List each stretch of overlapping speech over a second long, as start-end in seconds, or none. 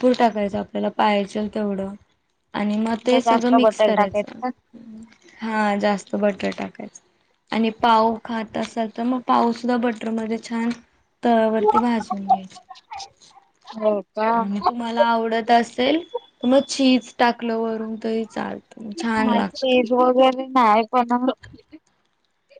2.9-4.4